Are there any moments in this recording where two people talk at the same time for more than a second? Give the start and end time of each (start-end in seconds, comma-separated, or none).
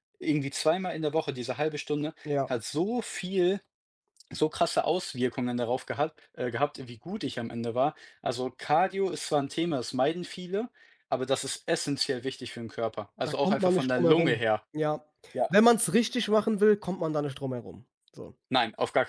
13.2-14.6